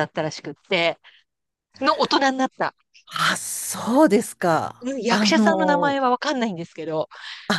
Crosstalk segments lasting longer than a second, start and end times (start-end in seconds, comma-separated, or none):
4.8-6.0